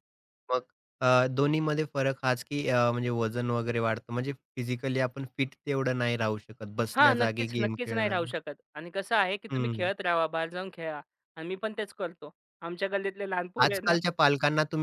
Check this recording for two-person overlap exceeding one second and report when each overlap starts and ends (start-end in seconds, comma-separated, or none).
7.0-8.4